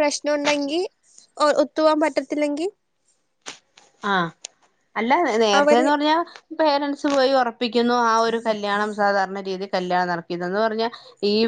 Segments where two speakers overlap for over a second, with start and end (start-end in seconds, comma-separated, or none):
none